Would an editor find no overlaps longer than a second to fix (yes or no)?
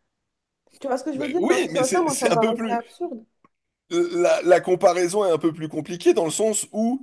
no